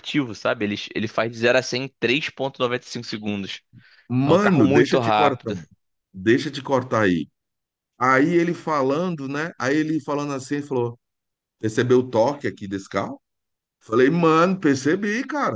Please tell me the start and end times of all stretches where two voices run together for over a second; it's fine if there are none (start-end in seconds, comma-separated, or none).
4.2-5.5